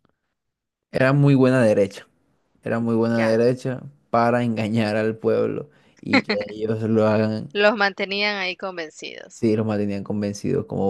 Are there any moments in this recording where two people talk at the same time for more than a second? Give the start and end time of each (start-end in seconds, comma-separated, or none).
none